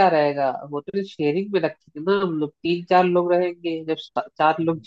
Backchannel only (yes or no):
yes